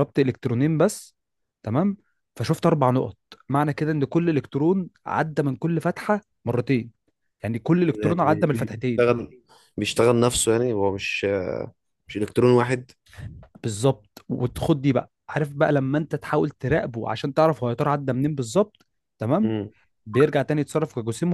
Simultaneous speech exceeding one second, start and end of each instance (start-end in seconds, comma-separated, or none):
7.9-9.1